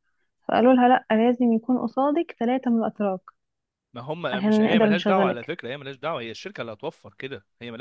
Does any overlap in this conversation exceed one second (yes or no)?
yes